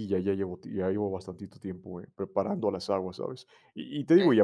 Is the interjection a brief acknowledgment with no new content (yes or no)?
yes